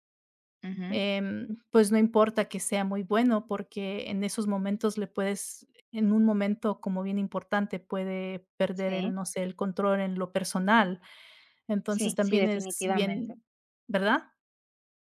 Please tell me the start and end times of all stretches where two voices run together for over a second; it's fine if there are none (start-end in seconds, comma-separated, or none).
11.9-13.3